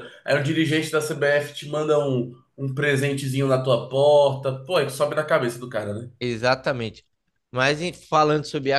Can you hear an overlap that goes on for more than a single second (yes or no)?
no